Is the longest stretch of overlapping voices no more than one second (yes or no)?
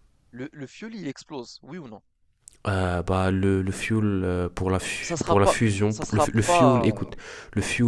no